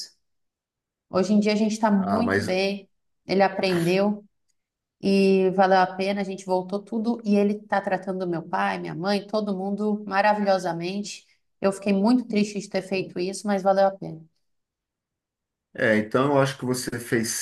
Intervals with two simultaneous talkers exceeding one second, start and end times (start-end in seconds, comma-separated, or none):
none